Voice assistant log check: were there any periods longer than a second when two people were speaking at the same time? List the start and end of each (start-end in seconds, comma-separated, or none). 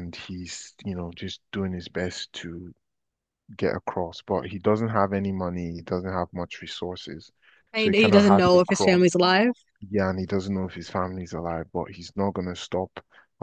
7.7-9.0